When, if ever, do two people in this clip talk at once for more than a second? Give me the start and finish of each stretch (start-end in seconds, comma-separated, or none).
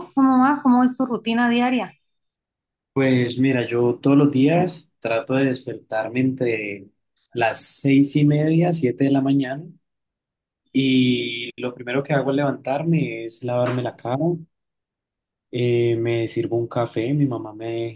none